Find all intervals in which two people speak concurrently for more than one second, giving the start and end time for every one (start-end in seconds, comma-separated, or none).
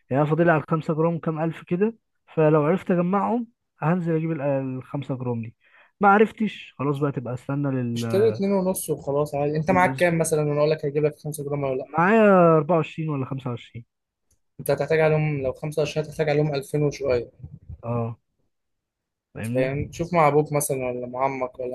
none